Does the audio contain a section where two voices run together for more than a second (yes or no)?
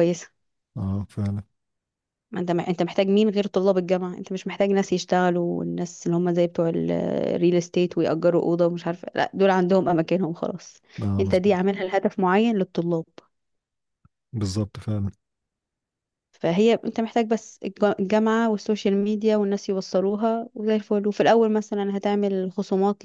no